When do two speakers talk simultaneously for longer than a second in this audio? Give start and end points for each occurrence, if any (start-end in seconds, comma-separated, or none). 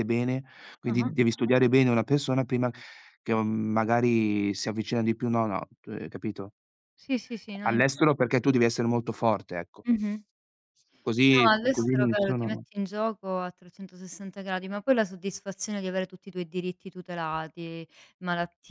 11.3-12.6